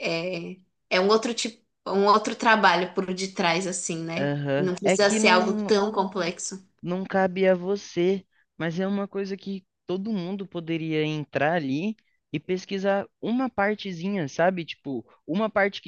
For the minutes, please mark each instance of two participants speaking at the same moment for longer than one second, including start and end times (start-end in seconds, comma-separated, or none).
4.2-5.7